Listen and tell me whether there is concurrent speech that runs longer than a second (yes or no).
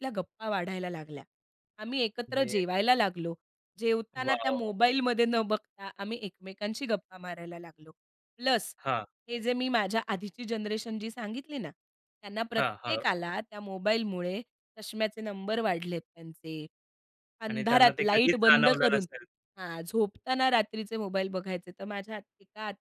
yes